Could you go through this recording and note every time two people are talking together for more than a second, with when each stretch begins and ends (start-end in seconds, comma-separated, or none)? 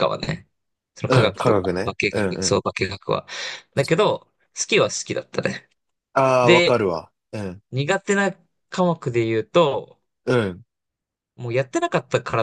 1.1-2.6